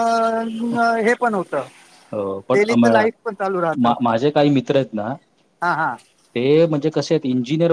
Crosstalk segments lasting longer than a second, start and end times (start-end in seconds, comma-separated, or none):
none